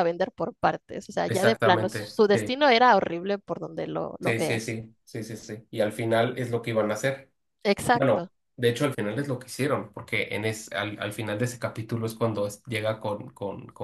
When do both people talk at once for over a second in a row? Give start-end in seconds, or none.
1.3-2.5